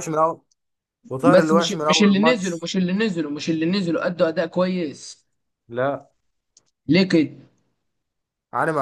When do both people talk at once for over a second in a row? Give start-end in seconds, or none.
1.2-2.7